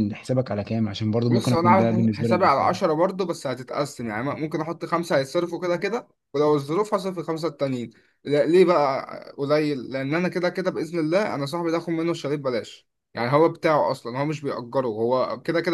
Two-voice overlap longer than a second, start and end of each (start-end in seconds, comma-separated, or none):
1.3-2.8